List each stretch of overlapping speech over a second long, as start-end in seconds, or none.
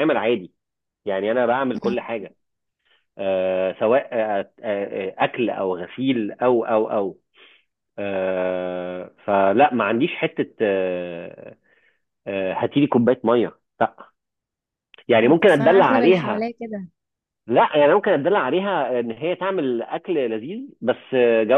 15.2-16.5